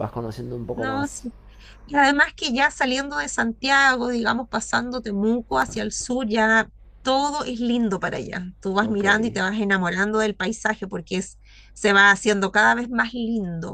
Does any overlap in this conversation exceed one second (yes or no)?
no